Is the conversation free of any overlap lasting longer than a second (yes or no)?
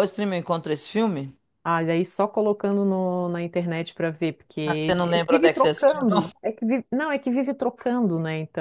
no